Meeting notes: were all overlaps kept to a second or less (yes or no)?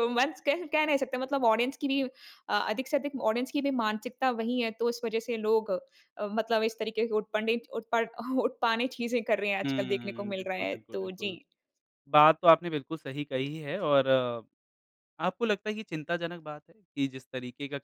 no